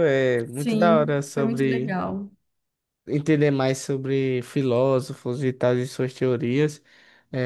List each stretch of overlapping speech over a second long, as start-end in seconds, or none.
0.5-1.9